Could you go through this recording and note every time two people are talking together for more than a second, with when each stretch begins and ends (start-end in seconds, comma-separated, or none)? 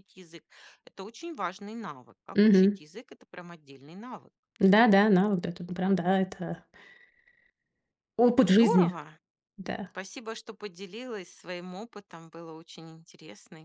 none